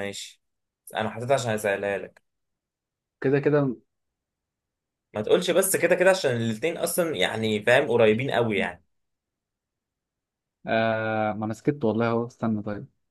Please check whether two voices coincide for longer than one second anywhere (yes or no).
no